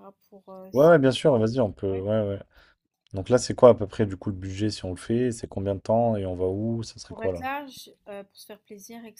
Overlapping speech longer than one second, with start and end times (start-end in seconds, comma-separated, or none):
none